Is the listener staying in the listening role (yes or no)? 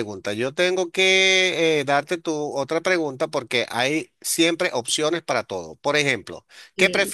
yes